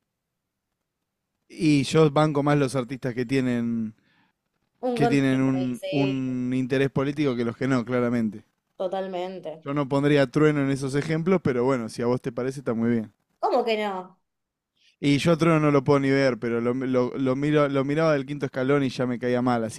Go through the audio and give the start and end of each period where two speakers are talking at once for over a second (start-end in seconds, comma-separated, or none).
4.9-6.2